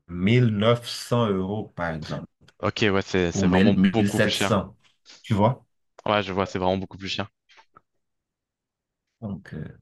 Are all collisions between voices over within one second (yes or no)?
no